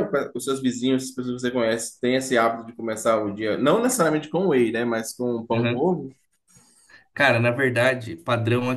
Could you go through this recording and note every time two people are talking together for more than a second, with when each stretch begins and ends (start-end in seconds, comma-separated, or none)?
none